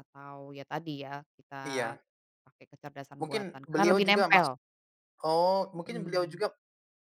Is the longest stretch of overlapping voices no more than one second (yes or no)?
no